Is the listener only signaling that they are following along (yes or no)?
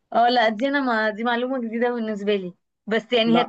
yes